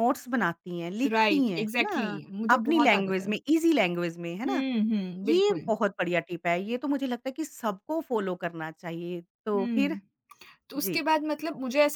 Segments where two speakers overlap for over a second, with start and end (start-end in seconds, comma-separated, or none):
1.1-3.3